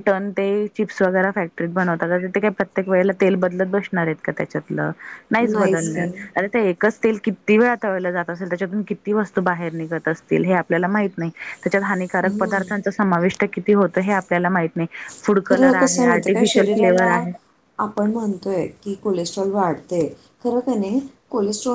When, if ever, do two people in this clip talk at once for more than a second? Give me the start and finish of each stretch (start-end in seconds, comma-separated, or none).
15.4-17.1